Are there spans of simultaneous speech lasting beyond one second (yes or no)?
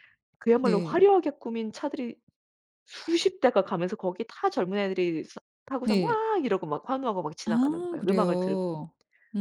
yes